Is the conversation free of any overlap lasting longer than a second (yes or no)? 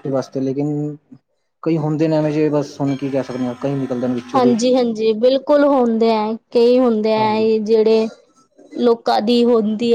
yes